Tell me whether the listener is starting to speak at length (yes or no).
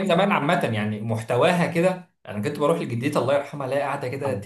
no